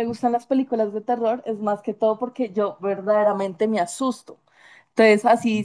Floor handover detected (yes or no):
no